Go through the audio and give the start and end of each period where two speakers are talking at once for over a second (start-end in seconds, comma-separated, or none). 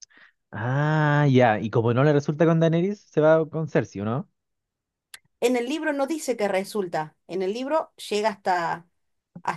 none